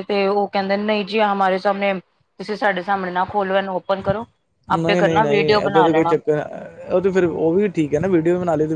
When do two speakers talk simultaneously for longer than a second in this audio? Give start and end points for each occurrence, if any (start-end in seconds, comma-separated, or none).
4.8-6.2